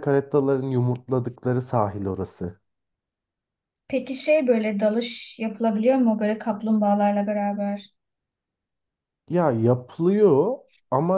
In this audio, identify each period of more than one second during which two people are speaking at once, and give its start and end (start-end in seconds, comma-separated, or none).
none